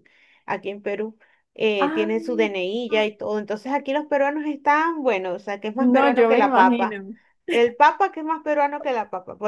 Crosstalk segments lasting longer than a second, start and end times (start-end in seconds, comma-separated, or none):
5.8-7.0